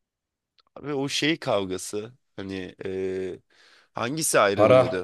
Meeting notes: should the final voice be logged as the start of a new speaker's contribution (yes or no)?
no